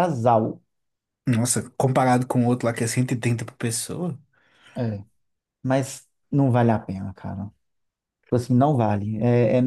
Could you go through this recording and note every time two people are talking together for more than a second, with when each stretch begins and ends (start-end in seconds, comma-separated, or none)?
none